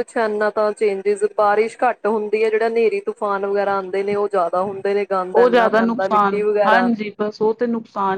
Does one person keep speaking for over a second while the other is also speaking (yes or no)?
no